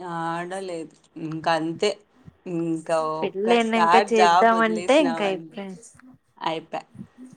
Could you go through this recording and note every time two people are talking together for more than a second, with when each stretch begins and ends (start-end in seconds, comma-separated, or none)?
3.2-5.2